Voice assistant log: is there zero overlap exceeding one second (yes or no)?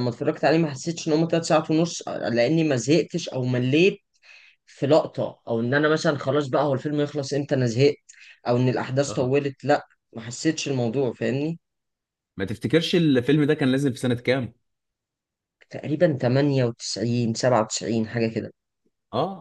yes